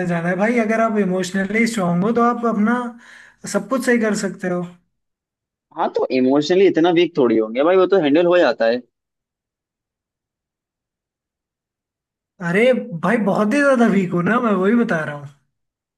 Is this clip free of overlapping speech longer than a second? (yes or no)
yes